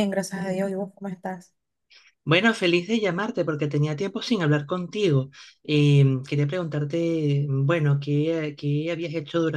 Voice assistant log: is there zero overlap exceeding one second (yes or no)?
yes